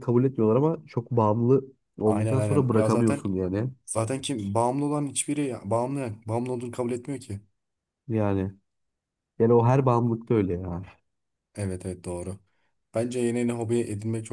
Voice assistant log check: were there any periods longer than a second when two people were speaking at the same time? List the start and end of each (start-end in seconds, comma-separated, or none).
2.0-3.2